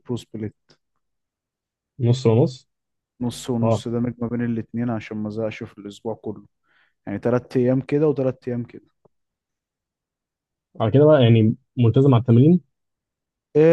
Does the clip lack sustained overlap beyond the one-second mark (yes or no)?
yes